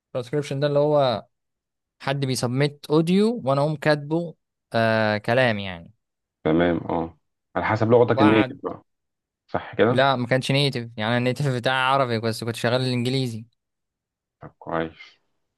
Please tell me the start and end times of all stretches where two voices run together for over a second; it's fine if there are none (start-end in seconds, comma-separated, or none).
none